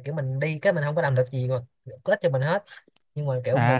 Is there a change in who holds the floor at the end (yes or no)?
yes